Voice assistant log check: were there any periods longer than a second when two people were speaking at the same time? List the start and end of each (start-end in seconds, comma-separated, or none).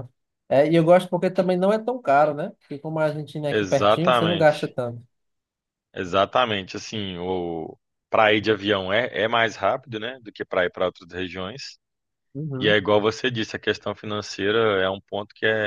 3.5-4.7